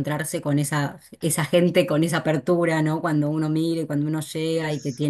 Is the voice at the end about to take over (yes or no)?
no